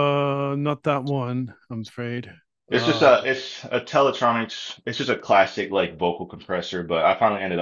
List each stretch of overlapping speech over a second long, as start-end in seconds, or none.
none